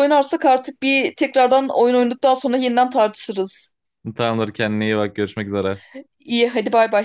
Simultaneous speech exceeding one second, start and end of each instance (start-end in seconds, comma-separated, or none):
none